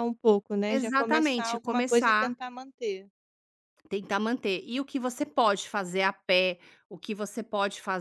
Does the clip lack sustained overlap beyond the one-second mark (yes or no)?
no